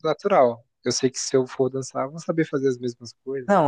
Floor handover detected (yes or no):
yes